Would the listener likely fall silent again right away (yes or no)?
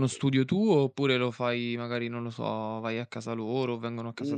no